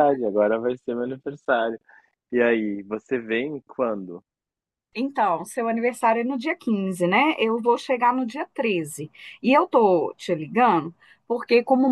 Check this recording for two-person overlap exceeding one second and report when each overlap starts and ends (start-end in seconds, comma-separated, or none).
none